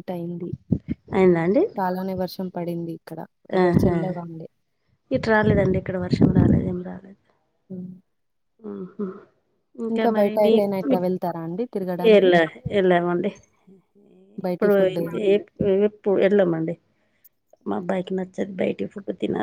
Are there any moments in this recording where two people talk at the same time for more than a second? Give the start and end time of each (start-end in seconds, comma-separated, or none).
10.2-12.3